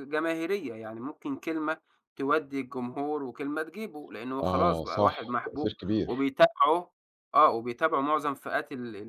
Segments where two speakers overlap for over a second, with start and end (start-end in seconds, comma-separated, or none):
4.4-6.3